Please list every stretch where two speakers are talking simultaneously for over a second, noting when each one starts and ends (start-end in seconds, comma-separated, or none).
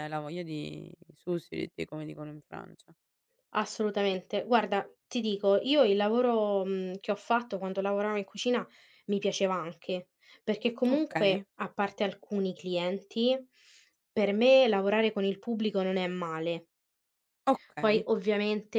none